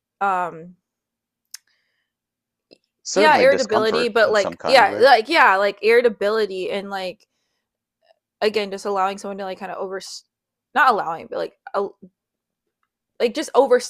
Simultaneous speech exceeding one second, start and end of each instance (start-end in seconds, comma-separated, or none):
3.1-5.1